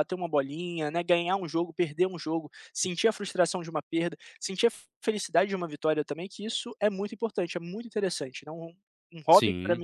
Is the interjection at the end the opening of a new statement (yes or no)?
no